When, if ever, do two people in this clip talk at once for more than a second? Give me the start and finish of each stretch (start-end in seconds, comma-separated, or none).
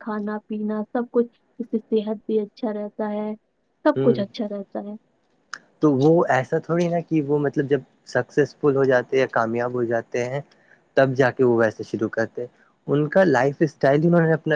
none